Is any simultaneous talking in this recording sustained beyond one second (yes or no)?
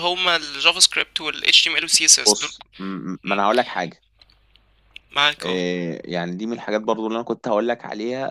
no